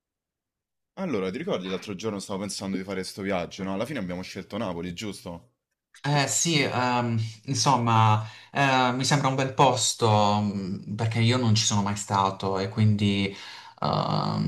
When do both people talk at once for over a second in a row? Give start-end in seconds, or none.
none